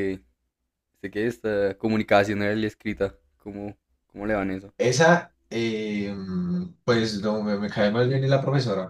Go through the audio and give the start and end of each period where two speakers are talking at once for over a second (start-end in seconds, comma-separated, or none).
none